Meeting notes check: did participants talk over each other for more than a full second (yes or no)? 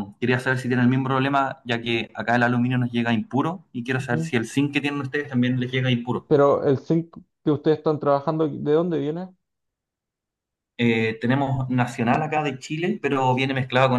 no